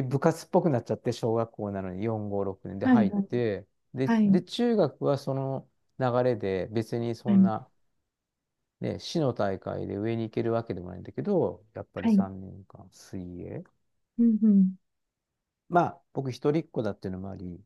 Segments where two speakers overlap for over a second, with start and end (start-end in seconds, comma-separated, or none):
none